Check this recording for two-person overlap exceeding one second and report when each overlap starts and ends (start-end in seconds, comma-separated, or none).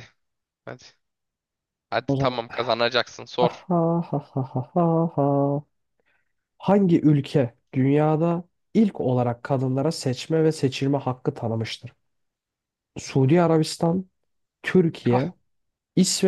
none